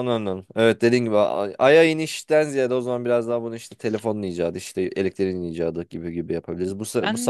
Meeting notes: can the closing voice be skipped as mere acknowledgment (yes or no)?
yes